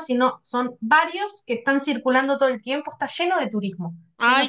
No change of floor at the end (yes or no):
no